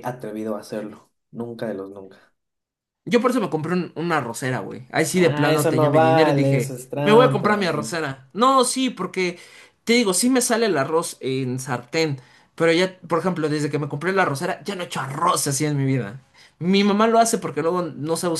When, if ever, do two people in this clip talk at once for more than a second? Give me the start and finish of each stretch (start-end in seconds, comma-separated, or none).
5.1-7.6